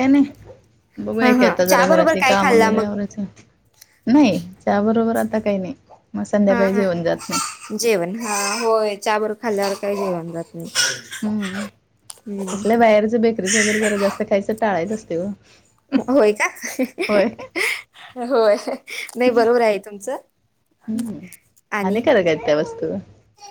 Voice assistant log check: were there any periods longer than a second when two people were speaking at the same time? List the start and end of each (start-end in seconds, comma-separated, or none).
1.2-2.9